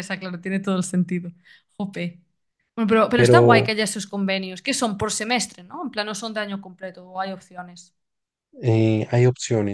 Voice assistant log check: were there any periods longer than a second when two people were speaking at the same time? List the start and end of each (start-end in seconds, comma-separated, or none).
none